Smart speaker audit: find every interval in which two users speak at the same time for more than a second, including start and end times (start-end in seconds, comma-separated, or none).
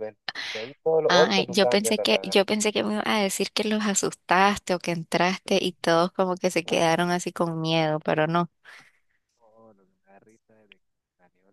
1.1-2.4